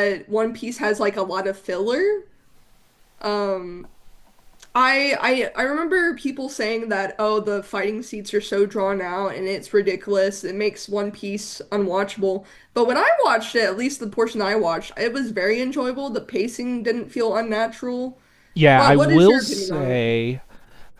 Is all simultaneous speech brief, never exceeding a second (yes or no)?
no